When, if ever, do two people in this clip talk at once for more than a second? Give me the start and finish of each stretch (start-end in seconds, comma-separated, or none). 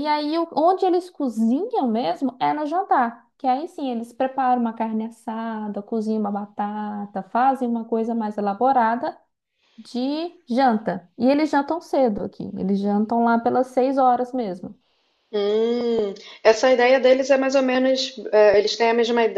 none